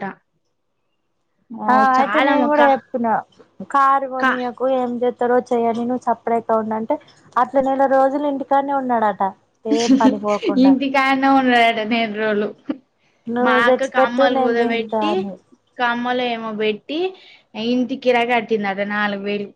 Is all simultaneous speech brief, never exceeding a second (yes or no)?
no